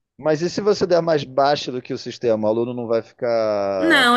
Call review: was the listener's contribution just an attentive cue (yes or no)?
no